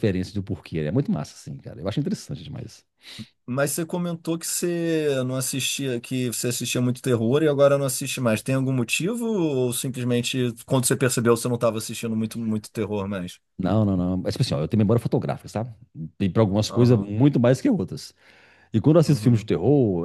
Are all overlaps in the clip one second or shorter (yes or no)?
yes